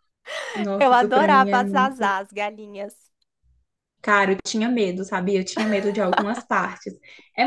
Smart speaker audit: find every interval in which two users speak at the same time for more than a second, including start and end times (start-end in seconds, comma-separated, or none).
0.8-2.1